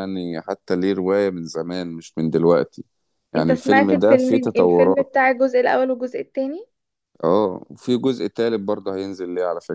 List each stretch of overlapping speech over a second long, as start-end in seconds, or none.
3.4-5.1